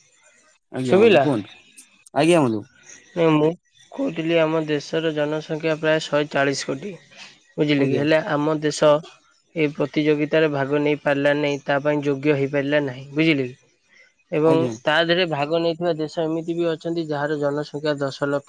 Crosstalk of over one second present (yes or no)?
no